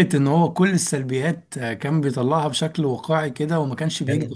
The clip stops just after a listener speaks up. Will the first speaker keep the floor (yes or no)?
yes